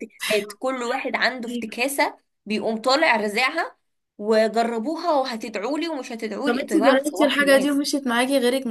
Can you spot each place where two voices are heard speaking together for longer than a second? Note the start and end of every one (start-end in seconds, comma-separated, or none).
6.5-7.8